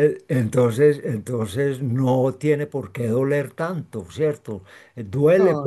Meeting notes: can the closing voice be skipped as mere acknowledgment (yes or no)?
yes